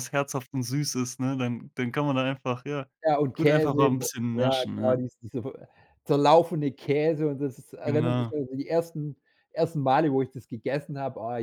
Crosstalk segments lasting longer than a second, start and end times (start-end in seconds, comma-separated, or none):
3.3-5.0